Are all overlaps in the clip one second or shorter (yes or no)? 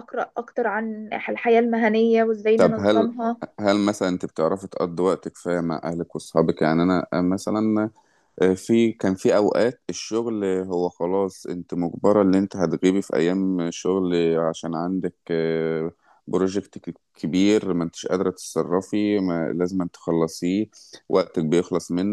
yes